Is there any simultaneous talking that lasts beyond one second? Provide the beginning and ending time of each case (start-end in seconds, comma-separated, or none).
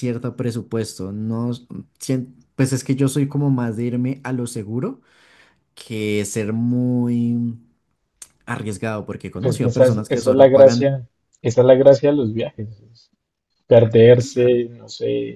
9.4-10.9